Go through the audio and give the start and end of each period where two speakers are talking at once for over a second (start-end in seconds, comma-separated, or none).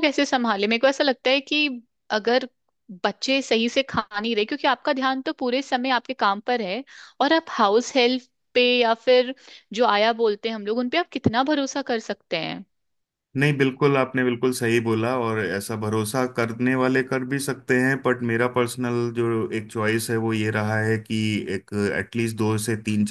none